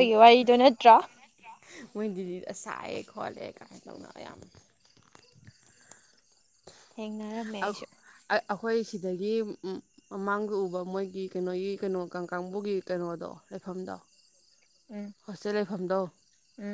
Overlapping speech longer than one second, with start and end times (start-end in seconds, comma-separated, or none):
none